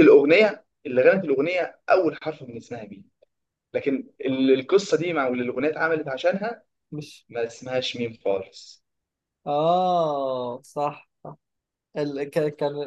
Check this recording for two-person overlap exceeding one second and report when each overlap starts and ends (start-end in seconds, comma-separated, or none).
none